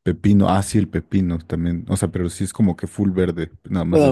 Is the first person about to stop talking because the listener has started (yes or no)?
yes